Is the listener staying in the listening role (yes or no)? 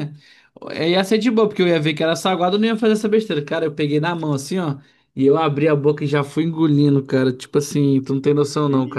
no